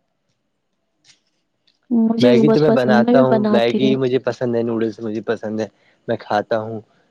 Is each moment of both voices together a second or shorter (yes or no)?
no